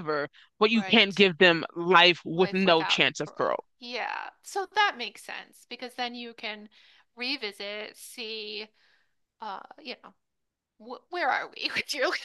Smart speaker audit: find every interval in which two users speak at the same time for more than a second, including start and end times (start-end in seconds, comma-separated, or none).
2.3-3.6